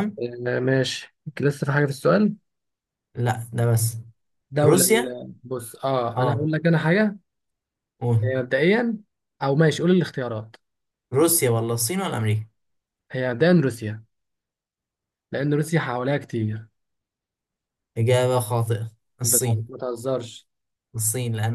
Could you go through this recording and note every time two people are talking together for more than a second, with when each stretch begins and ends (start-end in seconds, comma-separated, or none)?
none